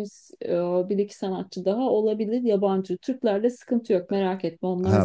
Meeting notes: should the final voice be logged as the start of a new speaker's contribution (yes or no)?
yes